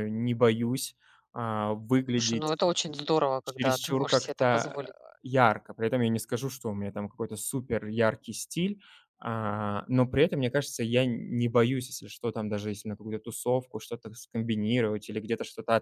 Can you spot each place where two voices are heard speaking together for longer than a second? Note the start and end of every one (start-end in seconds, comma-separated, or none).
3.4-4.8